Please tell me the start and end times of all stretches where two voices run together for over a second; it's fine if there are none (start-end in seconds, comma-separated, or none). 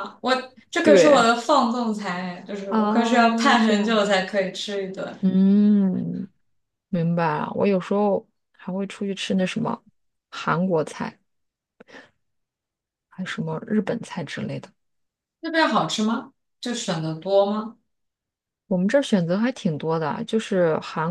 2.7-4.0